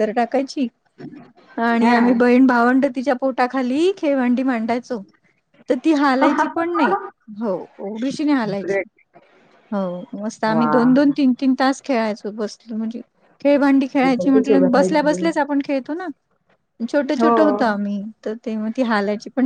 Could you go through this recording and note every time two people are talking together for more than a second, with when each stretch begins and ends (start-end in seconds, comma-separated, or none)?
14.0-15.3